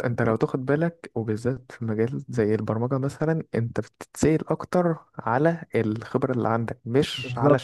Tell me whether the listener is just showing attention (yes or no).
no